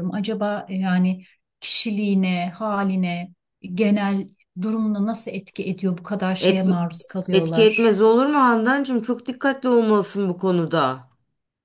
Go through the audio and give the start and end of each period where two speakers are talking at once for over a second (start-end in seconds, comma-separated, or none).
none